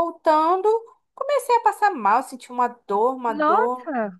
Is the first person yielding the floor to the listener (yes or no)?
no